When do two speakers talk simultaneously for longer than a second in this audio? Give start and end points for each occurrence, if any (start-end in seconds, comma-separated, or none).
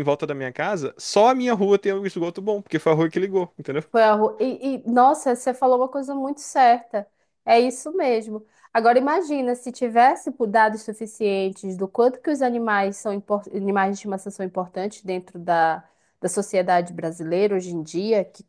none